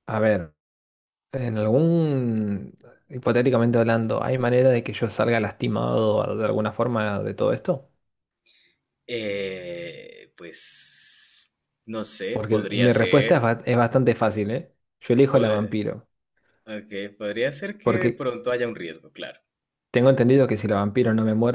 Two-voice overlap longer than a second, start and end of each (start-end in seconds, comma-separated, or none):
12.3-13.5